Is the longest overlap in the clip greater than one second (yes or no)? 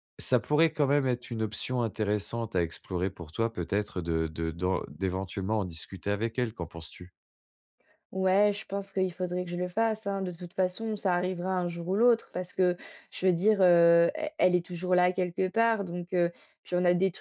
no